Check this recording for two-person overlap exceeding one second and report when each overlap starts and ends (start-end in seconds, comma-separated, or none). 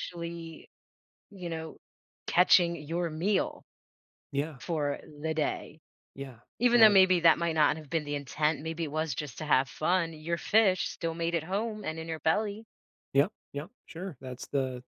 none